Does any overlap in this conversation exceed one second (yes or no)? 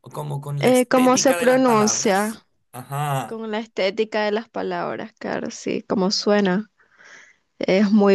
yes